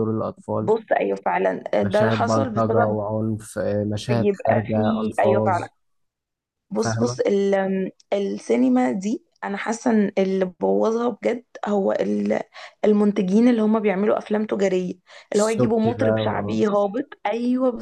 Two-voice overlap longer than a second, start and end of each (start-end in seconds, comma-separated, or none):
1.8-3.1, 4.1-5.7, 15.3-16.6